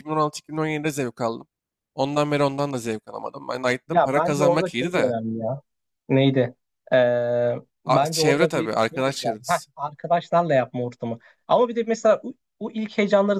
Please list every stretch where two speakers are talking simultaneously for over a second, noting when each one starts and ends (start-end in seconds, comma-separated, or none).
3.9-5.2, 7.8-9.7